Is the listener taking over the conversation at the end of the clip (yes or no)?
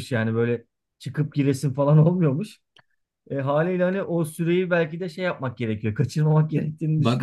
yes